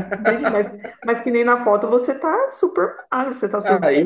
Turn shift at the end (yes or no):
yes